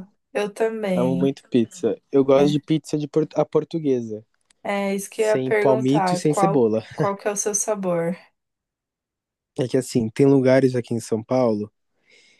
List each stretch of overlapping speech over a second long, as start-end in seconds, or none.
5.1-6.8